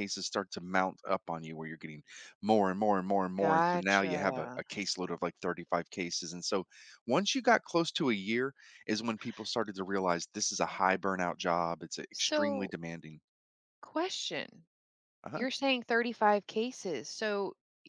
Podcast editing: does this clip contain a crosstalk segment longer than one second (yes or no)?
yes